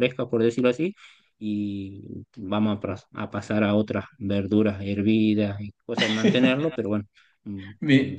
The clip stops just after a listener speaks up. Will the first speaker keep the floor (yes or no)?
yes